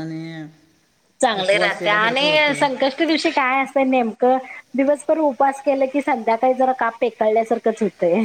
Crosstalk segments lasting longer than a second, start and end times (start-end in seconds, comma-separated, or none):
1.4-2.6